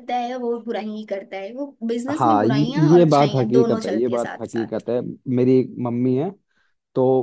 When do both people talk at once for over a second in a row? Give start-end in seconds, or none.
2.1-4.9